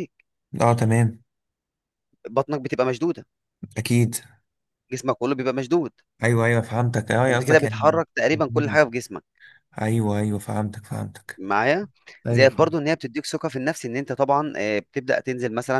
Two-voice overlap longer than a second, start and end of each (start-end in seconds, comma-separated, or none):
7.3-8.8